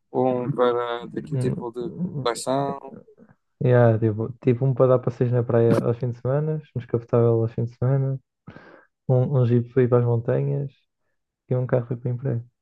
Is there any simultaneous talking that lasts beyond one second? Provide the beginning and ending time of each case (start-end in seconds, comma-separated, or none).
1.0-2.4